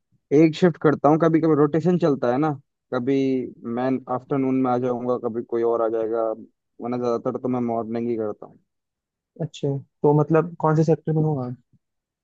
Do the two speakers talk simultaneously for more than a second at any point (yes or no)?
no